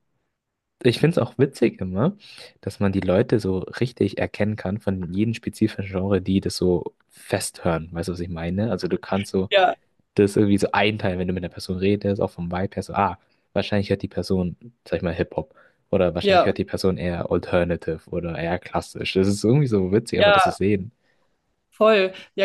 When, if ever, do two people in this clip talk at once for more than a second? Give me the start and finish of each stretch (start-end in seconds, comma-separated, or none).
none